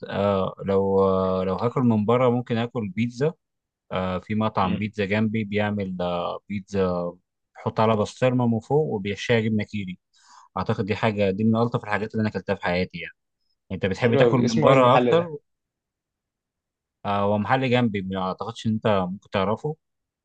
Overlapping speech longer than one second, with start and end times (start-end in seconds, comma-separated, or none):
14.0-15.3